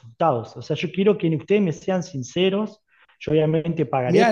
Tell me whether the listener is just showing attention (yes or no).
no